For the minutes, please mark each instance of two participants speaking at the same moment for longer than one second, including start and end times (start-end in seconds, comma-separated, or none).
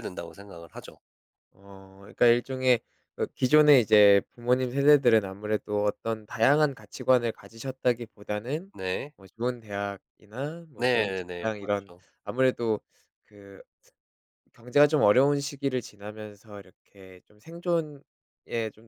10.8-12.0